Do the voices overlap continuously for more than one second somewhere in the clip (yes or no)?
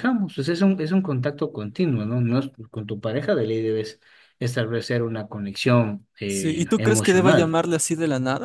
yes